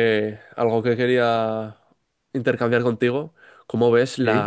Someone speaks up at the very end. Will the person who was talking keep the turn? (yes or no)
yes